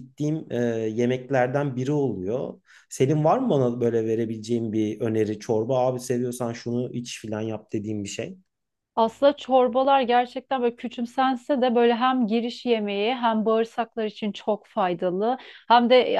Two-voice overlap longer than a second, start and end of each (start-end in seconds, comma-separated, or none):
none